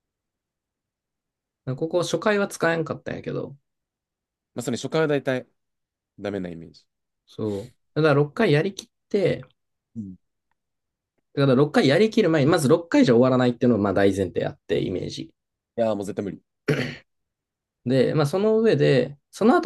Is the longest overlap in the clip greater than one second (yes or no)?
no